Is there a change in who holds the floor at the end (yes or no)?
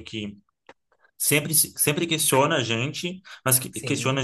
no